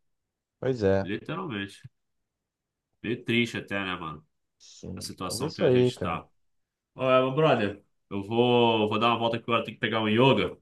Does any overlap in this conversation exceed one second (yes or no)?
yes